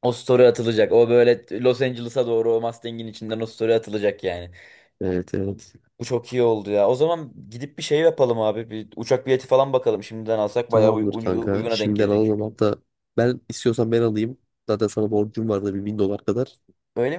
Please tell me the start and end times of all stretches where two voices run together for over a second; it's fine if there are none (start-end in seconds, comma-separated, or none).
10.7-12.4